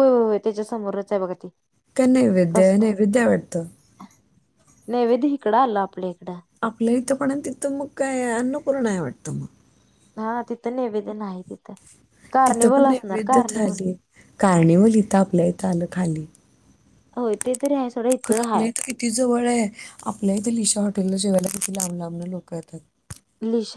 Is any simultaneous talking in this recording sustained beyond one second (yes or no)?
yes